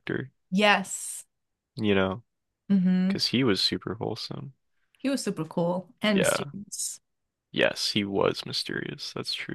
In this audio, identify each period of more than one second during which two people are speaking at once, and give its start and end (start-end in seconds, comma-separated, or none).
none